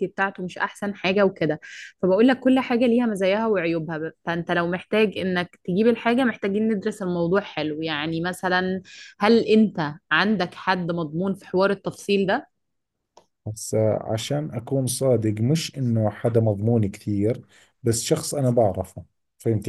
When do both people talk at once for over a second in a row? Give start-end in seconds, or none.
none